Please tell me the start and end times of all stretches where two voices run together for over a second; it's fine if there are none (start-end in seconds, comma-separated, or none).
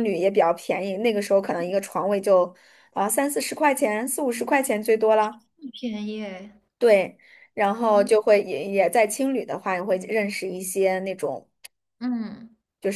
none